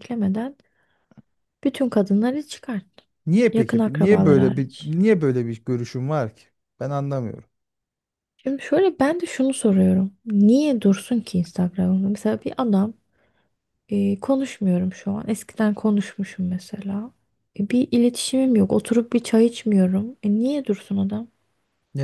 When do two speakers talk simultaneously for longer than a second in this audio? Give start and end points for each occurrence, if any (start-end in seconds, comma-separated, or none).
3.5-4.9